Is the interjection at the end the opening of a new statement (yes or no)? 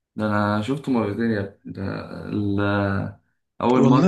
no